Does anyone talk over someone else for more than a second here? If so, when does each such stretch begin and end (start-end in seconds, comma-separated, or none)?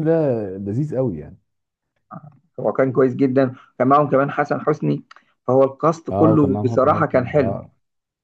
6.1-7.6